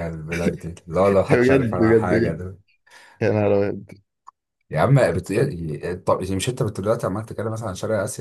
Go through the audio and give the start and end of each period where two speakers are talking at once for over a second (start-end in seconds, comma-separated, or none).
1.1-2.4